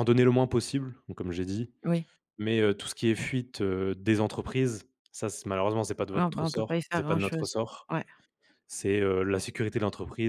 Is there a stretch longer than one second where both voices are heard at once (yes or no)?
yes